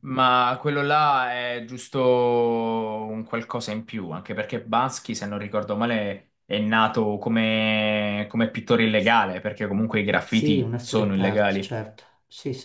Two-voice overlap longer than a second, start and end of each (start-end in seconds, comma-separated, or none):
10.2-11.7